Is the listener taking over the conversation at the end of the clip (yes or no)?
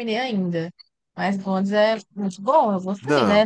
no